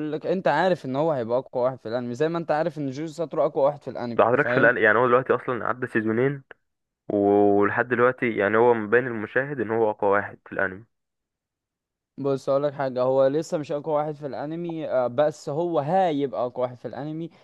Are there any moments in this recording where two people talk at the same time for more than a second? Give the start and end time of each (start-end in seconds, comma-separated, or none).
none